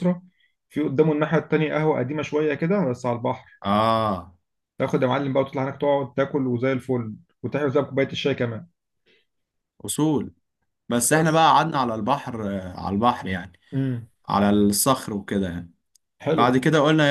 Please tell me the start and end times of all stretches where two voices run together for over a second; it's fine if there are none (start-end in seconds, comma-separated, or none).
none